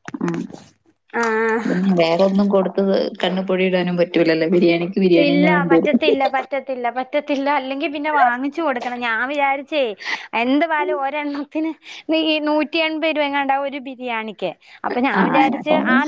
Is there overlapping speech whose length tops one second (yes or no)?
no